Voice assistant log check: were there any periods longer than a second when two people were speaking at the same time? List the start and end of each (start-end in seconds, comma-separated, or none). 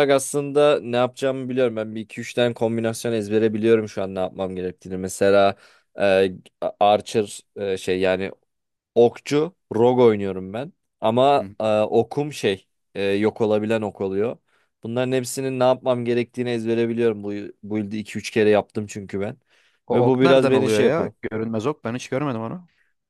19.9-21.1